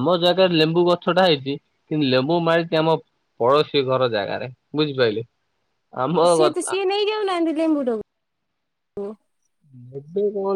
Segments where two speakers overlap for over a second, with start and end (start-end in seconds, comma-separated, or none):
none